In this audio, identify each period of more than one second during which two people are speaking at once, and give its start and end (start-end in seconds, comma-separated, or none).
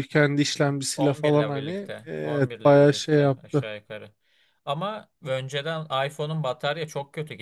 1.0-3.6